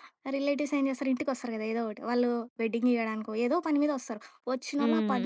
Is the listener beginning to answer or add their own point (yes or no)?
no